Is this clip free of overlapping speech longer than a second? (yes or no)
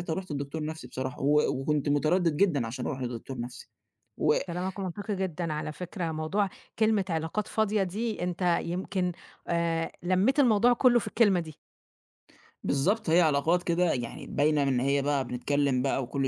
yes